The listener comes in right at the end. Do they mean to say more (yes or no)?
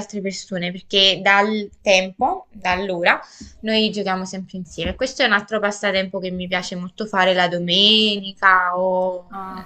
yes